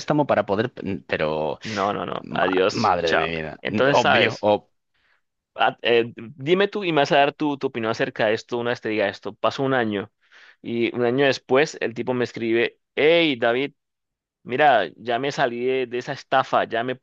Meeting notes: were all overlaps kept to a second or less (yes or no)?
no